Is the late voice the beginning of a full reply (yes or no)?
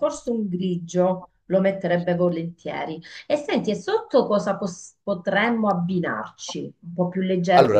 no